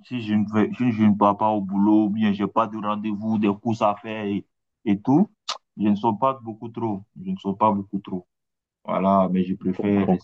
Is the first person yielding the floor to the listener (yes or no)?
no